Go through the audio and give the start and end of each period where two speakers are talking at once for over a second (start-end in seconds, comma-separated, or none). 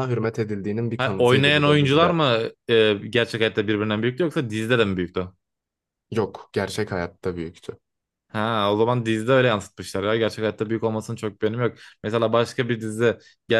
1.0-2.2